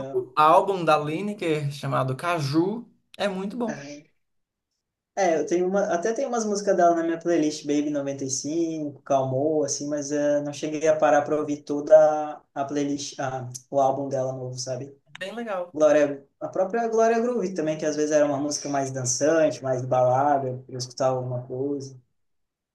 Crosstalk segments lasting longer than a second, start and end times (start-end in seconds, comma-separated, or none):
none